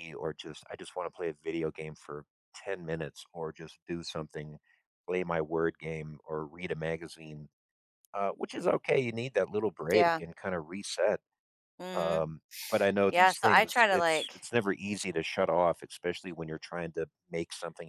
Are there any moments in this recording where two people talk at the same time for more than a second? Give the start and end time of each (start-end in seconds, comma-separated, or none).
13.1-14.5